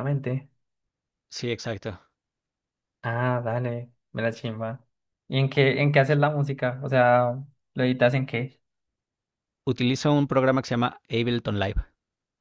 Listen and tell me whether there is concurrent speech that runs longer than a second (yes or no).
no